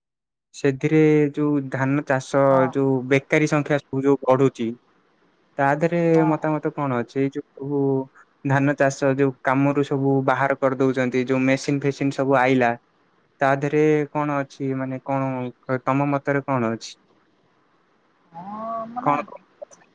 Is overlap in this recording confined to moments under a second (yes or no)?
yes